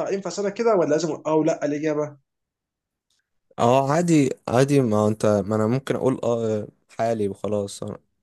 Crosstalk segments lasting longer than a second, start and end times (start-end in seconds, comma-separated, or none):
none